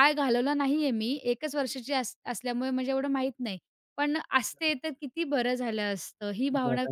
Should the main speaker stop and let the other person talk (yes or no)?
yes